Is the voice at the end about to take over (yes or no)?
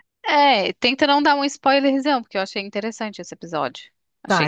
yes